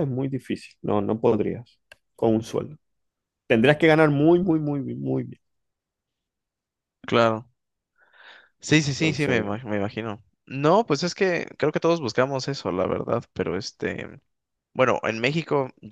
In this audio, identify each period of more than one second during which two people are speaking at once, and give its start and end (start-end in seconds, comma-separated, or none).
none